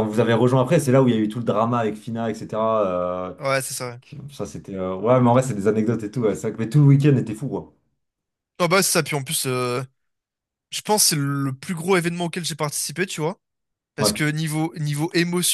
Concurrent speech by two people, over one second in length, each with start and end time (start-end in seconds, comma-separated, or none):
none